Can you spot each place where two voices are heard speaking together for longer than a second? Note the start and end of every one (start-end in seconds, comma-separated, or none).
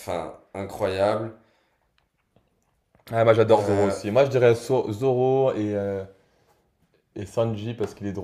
none